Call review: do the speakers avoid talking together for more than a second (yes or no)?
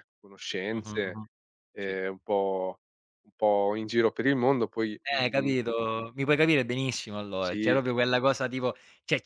yes